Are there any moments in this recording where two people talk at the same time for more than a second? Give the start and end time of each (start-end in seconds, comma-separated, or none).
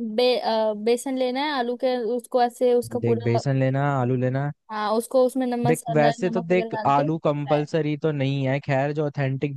5.6-7.6